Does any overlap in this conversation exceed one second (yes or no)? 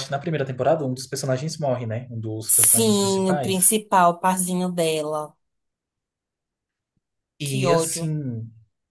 yes